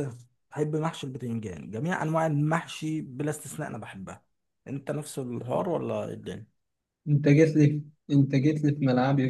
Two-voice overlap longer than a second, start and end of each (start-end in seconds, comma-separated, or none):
none